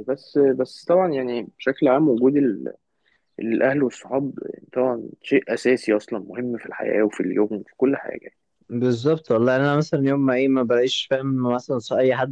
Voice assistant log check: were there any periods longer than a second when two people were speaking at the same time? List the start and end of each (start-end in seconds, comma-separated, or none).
none